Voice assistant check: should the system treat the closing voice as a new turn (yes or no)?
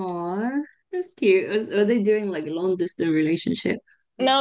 yes